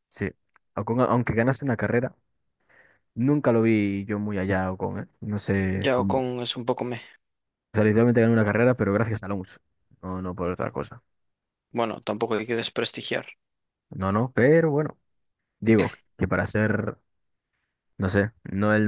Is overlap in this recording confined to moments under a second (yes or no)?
yes